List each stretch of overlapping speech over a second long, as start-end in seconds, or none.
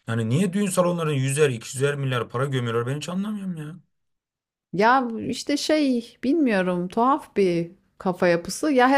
none